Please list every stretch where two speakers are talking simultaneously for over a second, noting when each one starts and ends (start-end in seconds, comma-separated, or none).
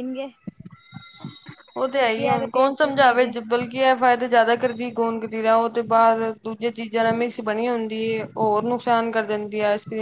1.9-3.2